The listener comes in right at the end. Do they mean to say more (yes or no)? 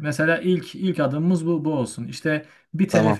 no